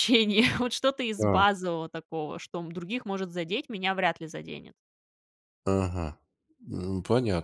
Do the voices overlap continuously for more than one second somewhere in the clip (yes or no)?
no